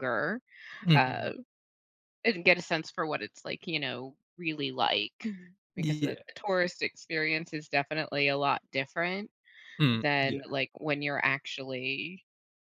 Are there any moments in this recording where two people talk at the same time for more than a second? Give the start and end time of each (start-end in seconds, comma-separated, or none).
none